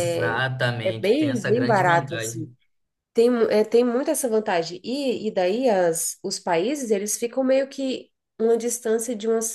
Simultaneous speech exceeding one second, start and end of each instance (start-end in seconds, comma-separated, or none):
0.8-2.5